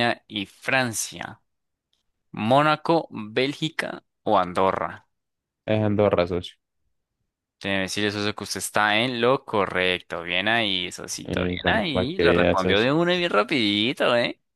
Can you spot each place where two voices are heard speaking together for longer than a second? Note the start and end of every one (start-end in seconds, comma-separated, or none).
11.2-12.9